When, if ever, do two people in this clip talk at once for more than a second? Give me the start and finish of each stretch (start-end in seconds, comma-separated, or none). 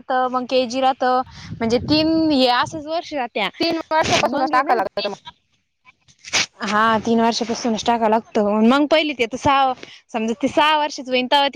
none